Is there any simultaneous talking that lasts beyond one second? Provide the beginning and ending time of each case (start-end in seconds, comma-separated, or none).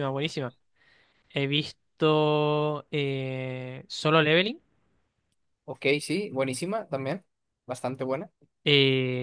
none